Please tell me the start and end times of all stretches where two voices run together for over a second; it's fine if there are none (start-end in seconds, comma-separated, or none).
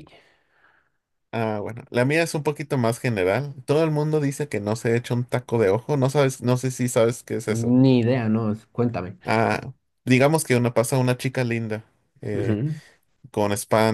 none